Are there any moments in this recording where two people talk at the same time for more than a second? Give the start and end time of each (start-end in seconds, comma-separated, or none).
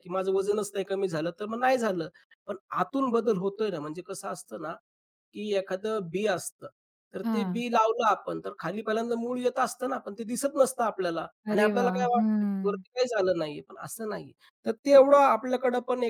11.5-12.8